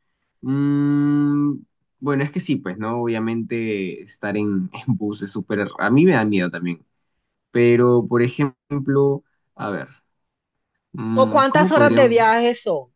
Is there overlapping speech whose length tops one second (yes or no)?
yes